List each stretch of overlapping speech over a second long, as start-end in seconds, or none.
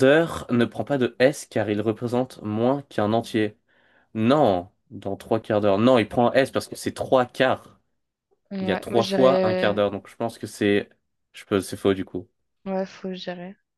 8.6-9.8